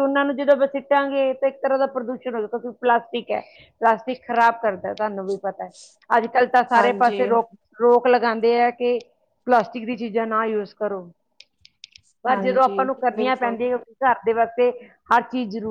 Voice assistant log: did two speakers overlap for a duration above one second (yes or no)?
yes